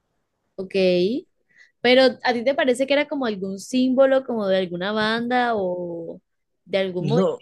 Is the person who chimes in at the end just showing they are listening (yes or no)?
yes